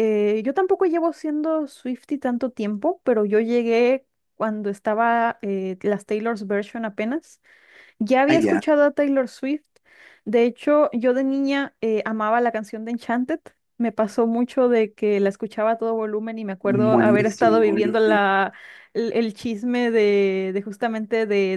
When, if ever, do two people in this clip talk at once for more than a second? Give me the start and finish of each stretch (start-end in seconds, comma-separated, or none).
16.6-18.2